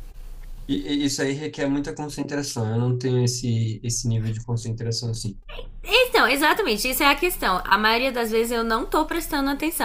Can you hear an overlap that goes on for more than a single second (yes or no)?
no